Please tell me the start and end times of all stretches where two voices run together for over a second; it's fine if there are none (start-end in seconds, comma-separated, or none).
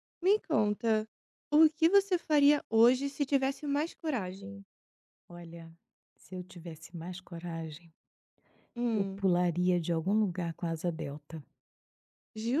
none